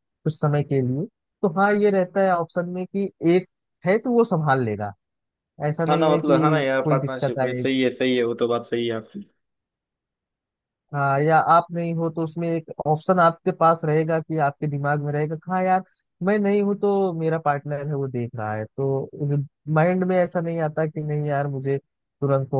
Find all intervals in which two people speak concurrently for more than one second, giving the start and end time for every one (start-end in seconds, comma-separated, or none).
5.9-7.7